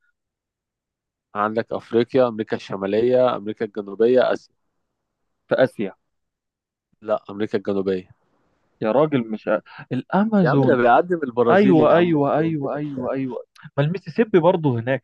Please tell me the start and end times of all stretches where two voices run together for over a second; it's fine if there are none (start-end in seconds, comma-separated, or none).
11.5-12.7